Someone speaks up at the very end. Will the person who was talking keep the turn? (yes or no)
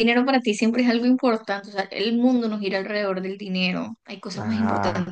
no